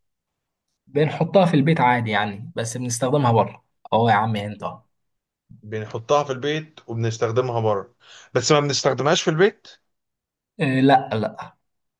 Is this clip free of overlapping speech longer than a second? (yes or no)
yes